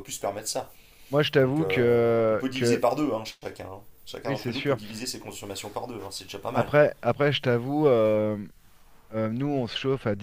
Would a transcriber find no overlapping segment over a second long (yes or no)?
no